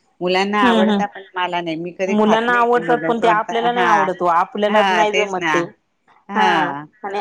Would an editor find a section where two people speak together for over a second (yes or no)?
yes